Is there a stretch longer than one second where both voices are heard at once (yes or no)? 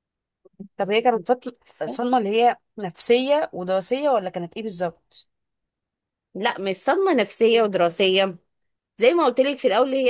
no